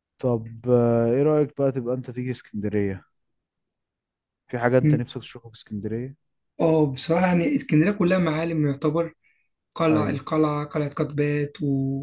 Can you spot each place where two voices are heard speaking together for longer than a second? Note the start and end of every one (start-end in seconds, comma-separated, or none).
none